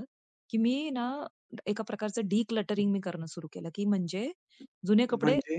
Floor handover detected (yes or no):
no